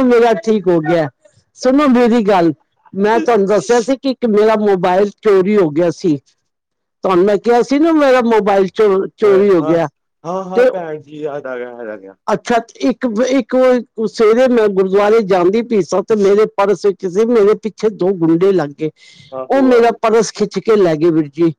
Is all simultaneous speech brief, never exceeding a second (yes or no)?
yes